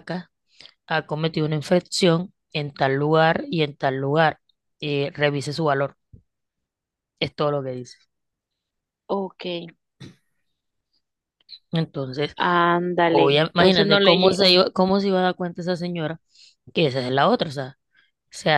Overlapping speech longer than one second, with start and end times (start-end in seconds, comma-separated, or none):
13.1-14.6